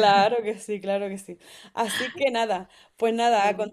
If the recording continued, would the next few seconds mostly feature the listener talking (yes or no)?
no